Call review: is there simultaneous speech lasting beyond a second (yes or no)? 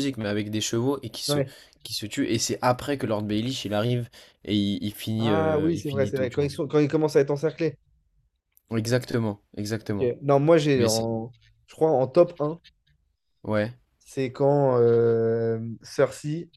yes